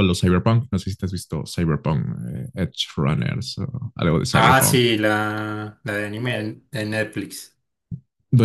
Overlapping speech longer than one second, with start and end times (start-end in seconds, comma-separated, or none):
none